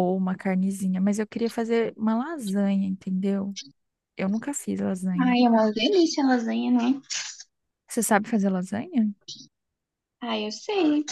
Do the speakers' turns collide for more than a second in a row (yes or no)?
no